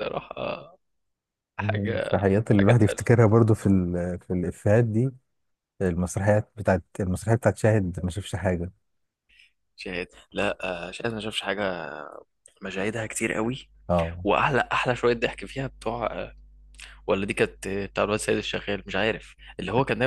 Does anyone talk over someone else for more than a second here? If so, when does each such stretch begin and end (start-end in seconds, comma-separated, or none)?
1.6-3.1